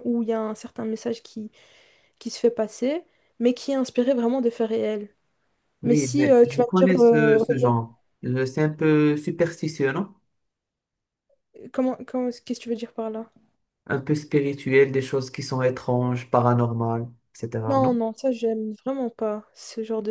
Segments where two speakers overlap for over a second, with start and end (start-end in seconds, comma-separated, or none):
5.8-7.7